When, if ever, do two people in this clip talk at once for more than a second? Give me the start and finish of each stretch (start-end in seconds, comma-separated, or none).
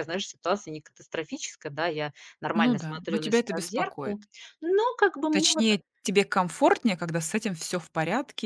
2.5-4.2